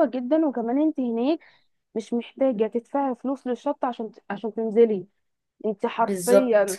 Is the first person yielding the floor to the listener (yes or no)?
no